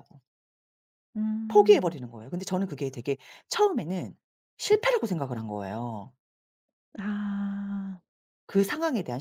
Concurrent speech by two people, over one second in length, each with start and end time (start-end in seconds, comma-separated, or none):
none